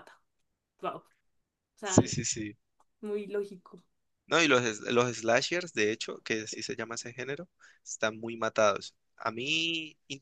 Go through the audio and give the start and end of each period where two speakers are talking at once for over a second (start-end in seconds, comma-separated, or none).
none